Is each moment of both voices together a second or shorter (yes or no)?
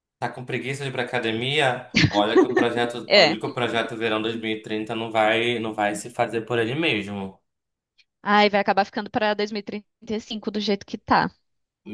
yes